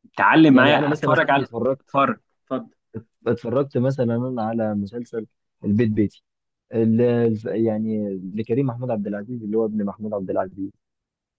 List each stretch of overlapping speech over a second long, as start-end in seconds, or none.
0.5-1.9